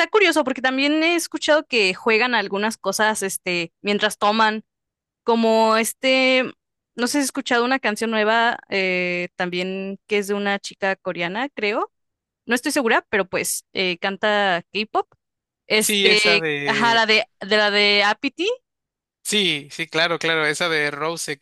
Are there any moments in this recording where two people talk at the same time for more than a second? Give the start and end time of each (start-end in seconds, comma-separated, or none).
15.8-17.0